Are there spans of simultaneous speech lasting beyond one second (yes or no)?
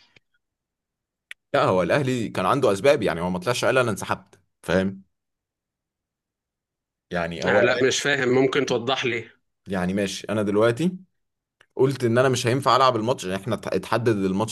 no